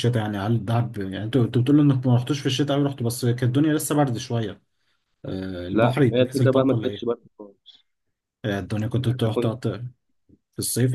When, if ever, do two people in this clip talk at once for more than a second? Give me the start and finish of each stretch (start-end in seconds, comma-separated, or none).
5.7-7.1